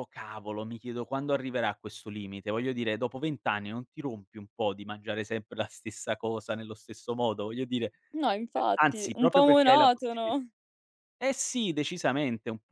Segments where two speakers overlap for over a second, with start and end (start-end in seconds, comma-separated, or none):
8.5-10.4